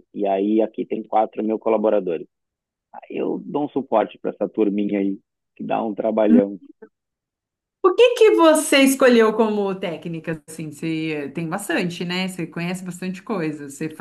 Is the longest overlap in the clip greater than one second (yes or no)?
no